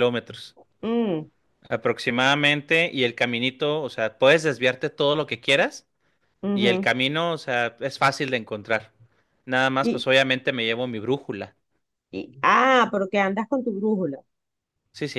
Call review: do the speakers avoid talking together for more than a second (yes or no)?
yes